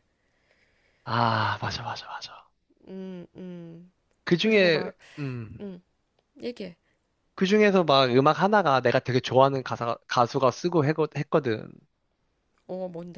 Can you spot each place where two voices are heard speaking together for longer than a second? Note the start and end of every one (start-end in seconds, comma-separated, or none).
none